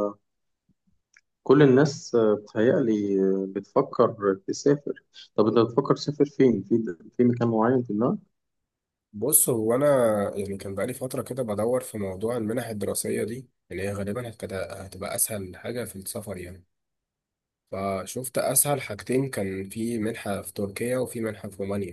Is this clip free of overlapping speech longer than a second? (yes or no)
yes